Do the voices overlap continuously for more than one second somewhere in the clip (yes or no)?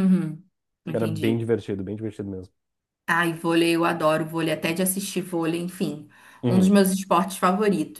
no